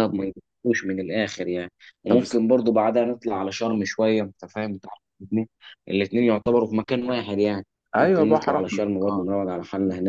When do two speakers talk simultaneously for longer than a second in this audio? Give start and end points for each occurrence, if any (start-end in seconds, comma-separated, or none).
8.0-9.3